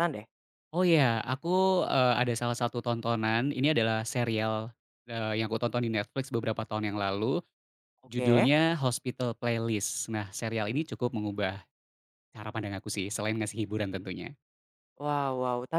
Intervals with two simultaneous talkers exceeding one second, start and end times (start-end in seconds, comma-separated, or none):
none